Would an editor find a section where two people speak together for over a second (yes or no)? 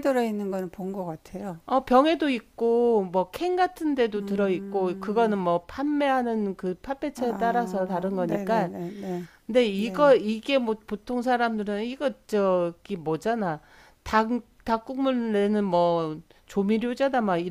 yes